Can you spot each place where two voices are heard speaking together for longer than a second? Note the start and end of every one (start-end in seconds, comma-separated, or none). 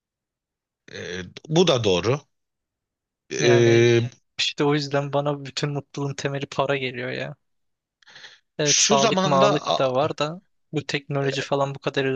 8.6-10.1